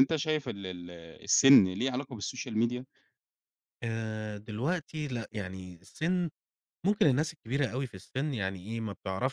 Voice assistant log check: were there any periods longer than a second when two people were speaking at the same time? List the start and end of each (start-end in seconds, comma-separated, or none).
none